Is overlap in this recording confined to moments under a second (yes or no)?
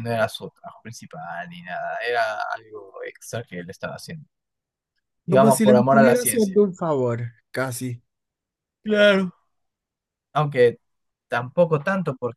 no